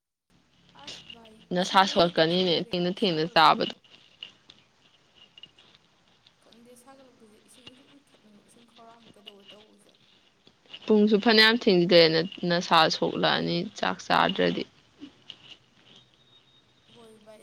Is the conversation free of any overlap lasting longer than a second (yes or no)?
no